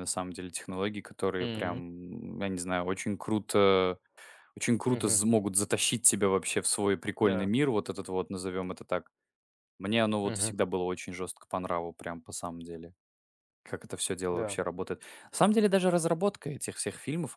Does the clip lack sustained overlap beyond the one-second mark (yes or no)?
yes